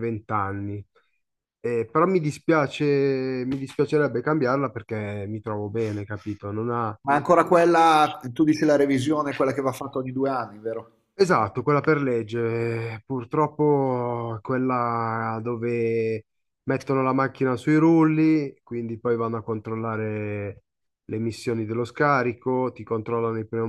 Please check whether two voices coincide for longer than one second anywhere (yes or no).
no